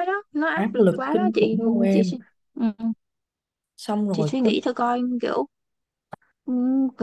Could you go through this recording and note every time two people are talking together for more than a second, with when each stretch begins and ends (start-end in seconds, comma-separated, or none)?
0.5-2.1